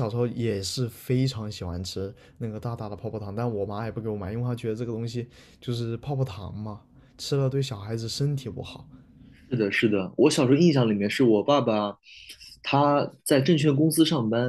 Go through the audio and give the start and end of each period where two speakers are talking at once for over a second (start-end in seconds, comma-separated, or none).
none